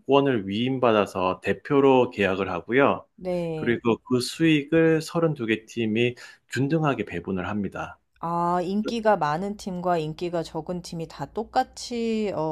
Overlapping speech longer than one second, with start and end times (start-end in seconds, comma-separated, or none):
none